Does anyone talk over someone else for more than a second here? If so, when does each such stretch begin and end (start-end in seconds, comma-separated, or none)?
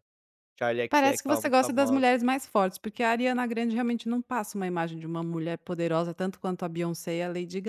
0.9-2.2